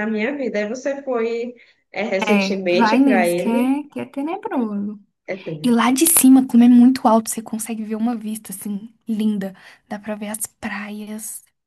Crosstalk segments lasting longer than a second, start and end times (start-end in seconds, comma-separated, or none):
2.3-3.8